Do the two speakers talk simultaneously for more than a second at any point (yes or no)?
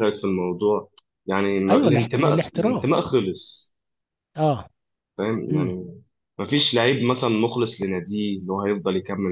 yes